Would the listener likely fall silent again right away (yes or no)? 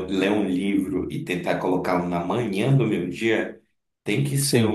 yes